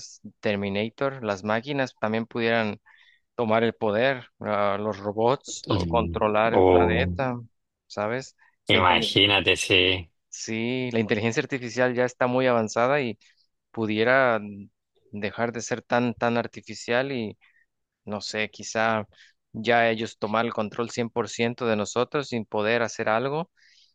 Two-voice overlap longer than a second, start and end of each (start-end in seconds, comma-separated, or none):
5.7-7.2